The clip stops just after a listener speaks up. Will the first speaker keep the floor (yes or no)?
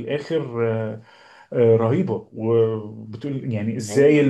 yes